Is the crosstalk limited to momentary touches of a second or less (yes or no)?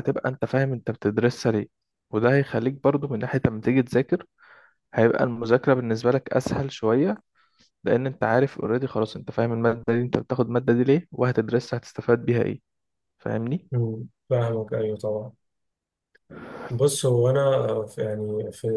yes